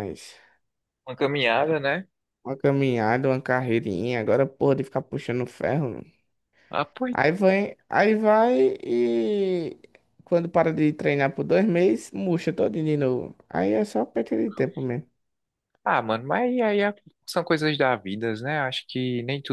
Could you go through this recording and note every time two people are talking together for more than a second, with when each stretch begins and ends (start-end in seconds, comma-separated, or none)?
none